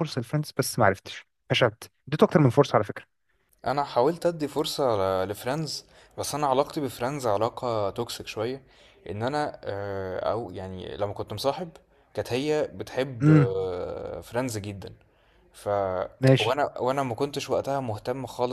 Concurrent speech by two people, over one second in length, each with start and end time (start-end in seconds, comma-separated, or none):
none